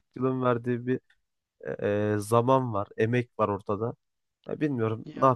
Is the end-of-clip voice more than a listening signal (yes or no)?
no